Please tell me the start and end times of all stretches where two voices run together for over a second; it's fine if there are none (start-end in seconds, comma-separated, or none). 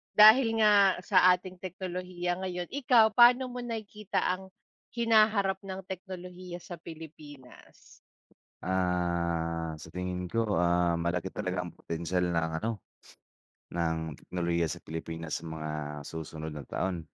none